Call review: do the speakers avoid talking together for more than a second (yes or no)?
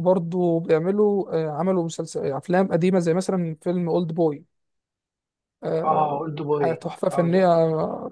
no